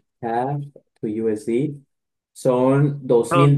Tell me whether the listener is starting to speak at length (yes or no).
no